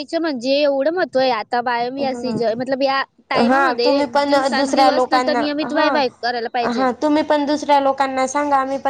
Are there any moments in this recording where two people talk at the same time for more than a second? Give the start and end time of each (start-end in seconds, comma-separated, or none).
3.5-5.9